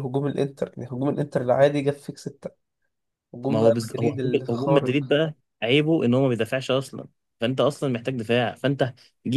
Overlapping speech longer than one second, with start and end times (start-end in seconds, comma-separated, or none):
3.5-5.2